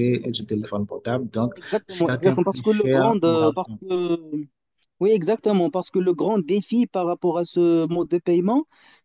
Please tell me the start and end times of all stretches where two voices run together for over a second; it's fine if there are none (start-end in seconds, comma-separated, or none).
1.5-3.8